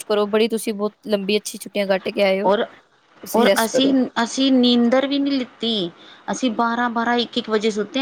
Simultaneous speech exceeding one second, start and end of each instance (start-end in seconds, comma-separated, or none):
none